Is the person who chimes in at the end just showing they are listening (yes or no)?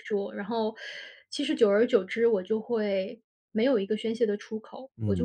no